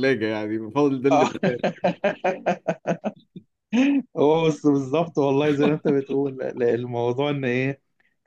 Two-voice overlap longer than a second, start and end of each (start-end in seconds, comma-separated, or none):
none